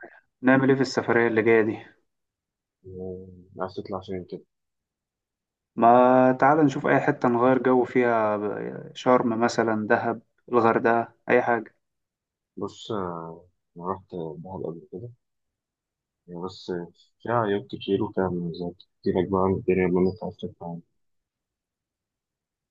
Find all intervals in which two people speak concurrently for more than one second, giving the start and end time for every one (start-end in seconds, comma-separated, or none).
none